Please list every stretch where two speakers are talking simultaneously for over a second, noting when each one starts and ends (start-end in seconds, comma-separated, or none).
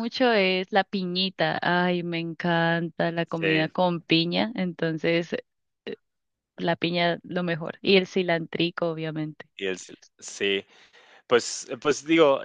none